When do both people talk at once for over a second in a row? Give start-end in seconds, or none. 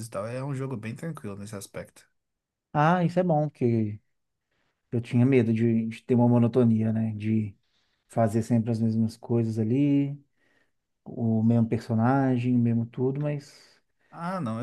none